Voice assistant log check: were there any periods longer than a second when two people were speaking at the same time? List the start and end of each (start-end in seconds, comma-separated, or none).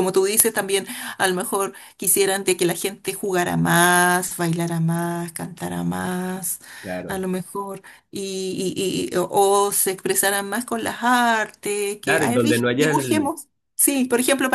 12.0-13.3